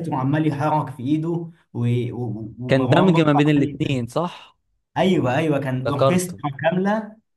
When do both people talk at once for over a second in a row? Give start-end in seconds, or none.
2.7-4.0